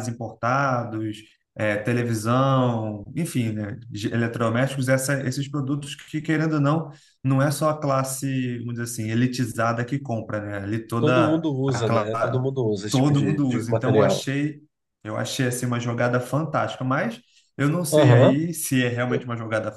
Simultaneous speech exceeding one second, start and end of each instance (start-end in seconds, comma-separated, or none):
11.0-12.2, 12.9-14.3